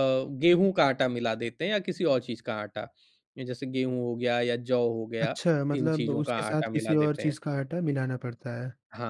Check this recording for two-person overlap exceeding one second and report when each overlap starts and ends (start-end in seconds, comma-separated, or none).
5.2-7.4